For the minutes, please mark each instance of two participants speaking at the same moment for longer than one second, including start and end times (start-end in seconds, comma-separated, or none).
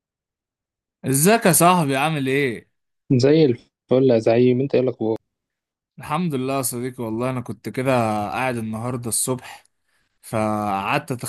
none